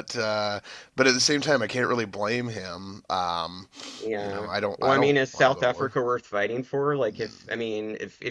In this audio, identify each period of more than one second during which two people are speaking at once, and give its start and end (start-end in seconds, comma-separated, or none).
4.2-6.0